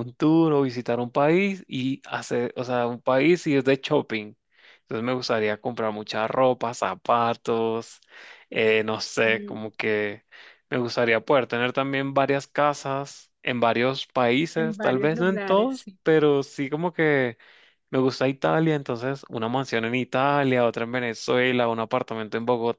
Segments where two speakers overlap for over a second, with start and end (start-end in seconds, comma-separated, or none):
14.5-16.0